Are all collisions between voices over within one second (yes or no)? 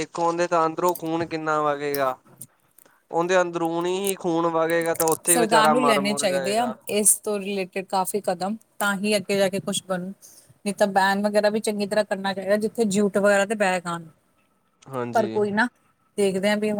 no